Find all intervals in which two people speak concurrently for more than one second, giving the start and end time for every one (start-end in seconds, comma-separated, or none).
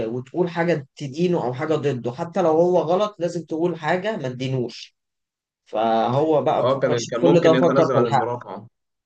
6.6-8.3